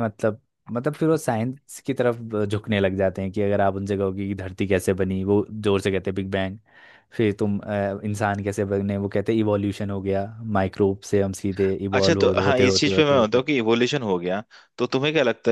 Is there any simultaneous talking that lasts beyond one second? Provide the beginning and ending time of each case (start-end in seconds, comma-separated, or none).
11.9-13.4